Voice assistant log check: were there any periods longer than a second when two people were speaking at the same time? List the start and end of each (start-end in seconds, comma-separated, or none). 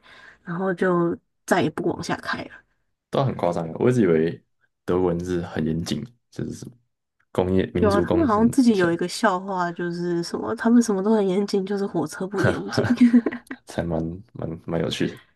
7.7-9.0